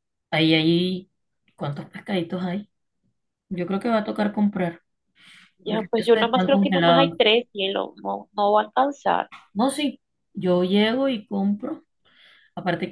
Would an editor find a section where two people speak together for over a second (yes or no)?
yes